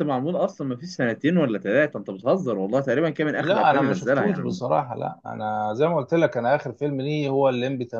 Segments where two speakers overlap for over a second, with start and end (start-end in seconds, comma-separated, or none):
3.4-4.6